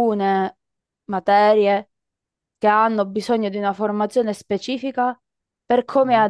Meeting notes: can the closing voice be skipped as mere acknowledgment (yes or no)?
yes